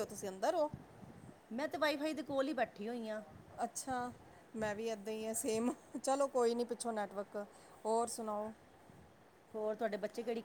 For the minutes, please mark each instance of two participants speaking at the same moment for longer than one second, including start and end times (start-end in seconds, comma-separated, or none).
none